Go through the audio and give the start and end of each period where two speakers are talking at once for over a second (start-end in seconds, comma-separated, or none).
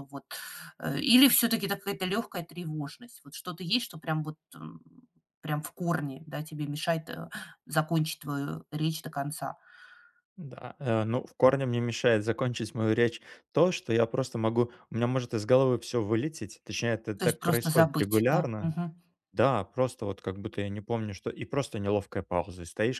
17.2-18.8